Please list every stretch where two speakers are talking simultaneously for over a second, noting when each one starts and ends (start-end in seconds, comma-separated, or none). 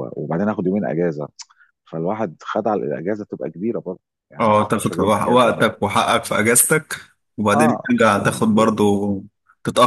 4.4-5.7